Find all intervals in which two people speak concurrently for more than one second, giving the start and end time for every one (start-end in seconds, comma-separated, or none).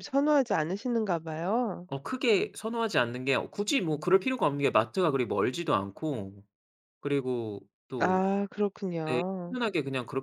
none